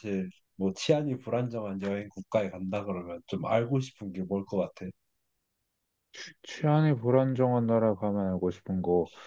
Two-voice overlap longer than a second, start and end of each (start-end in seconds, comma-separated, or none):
none